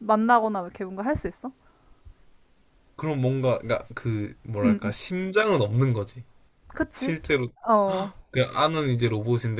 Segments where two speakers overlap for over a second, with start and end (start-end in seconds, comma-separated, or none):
none